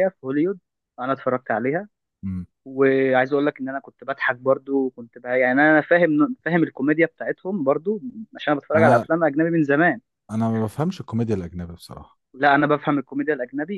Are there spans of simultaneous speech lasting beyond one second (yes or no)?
no